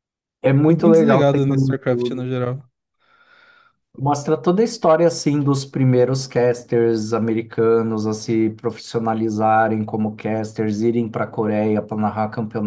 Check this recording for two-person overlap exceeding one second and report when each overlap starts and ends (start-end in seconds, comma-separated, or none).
0.7-2.3